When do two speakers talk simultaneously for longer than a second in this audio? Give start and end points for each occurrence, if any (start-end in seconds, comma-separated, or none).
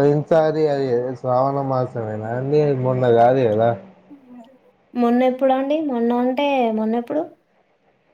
none